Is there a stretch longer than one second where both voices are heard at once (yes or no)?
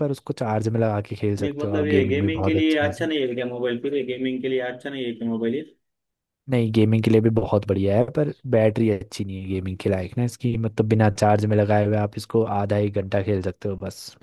yes